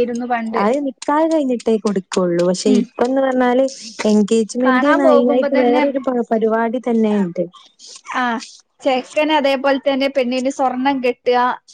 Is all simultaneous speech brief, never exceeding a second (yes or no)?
no